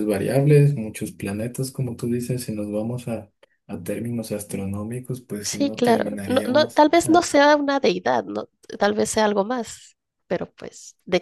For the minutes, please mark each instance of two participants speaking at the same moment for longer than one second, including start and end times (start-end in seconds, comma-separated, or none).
5.4-7.5